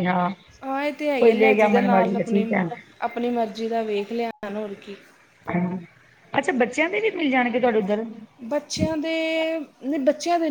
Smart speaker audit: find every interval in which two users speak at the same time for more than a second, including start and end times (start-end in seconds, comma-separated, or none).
none